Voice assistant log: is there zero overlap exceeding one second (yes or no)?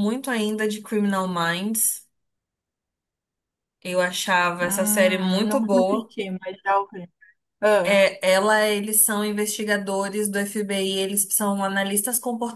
no